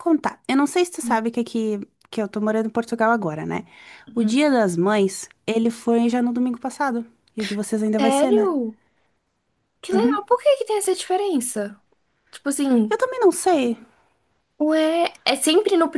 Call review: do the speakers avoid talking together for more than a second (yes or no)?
yes